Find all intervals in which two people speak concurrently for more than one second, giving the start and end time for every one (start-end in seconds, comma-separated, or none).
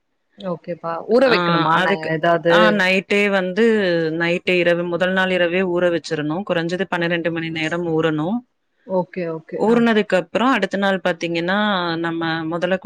none